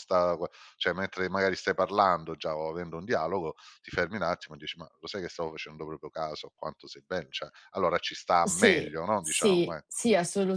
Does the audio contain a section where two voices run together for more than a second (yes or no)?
yes